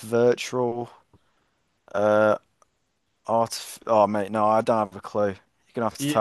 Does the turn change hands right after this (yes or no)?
yes